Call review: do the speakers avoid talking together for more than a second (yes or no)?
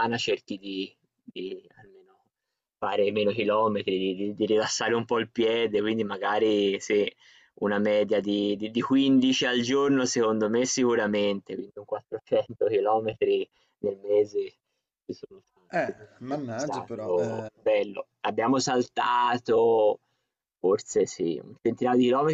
no